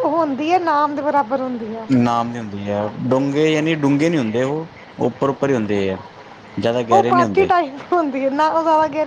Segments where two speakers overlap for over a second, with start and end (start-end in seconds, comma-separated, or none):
none